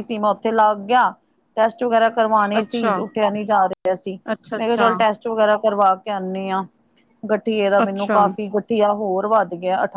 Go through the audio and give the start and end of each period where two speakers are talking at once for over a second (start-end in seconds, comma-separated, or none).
none